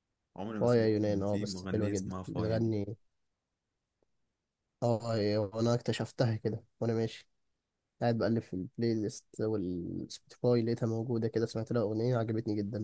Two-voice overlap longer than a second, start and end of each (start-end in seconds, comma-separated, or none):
0.6-2.7